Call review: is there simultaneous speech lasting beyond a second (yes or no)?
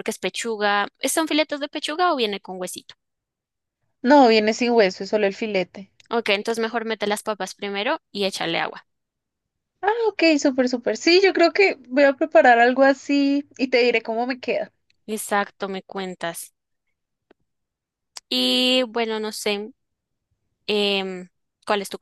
no